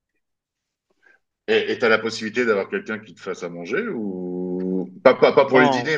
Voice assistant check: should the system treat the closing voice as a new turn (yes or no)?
no